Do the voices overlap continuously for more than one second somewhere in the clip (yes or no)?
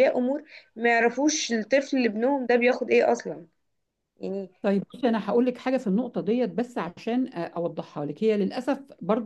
no